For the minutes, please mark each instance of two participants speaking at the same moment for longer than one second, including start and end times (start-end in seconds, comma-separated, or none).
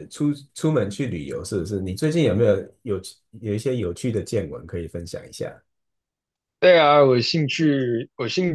none